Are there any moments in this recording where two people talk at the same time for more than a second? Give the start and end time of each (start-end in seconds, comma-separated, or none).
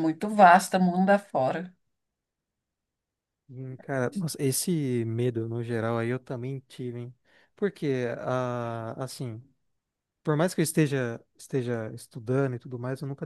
none